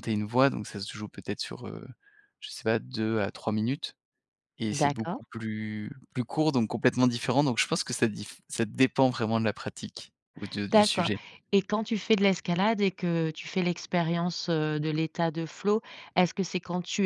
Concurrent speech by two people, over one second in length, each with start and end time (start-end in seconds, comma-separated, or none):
none